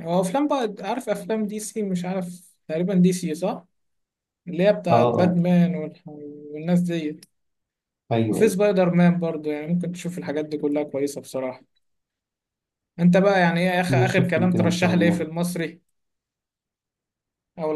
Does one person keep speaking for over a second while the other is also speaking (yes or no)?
yes